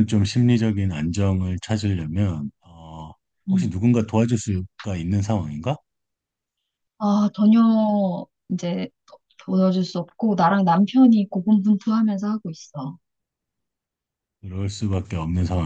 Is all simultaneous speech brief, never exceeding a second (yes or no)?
yes